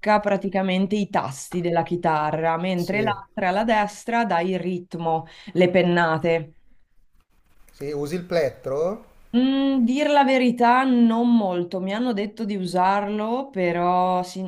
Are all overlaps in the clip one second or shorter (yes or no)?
yes